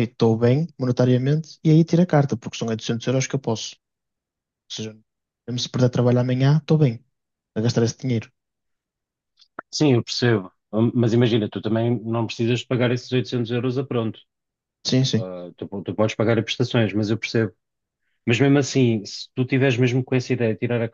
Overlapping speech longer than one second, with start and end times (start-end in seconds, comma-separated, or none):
none